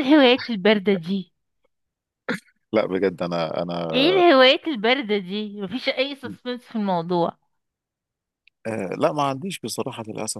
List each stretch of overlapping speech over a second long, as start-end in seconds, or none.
none